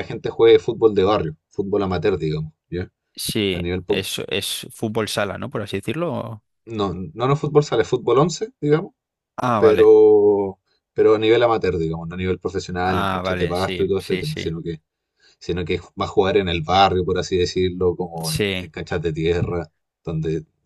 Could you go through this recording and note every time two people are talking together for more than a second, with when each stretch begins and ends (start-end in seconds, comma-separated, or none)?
12.8-14.5